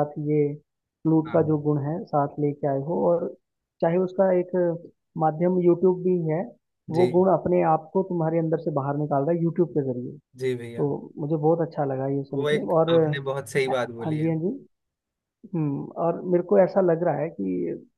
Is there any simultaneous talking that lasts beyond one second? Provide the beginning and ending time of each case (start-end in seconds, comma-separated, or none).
12.3-14.3